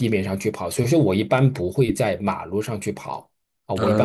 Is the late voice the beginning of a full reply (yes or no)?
yes